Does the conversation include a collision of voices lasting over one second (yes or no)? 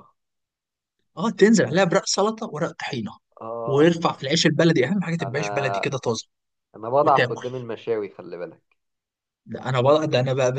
no